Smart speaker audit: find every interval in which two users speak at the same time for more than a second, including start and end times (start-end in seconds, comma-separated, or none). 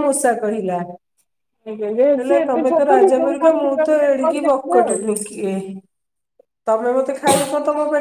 1.7-5.0